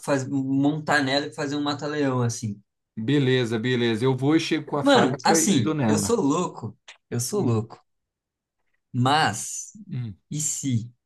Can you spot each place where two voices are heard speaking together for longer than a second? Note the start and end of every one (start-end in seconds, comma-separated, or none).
4.8-6.2